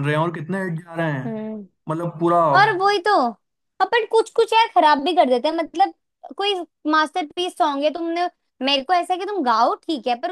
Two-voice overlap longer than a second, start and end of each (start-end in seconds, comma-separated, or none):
none